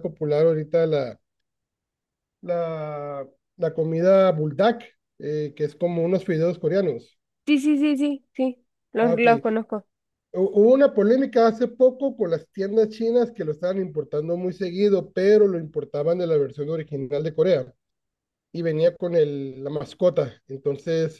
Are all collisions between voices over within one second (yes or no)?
yes